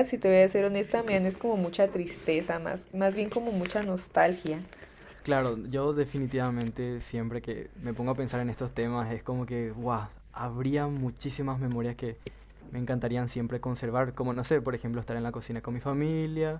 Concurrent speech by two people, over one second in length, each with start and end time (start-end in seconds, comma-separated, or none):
none